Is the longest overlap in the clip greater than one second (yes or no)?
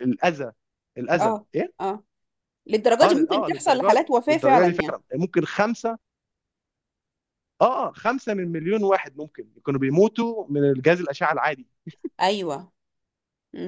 yes